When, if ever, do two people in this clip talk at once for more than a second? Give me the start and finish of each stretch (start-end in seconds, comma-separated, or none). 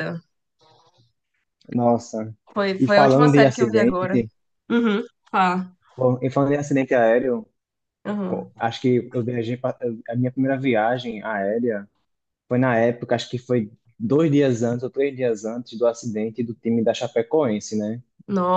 2.8-4.2